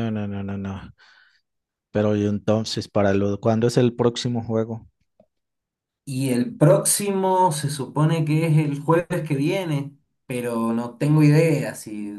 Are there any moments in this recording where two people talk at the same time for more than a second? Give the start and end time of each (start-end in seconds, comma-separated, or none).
none